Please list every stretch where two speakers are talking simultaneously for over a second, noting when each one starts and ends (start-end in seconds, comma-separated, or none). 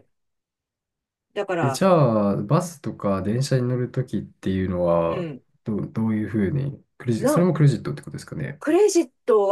none